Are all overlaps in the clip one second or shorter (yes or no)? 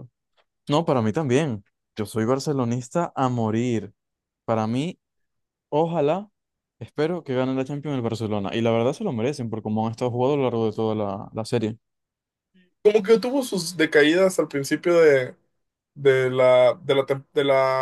yes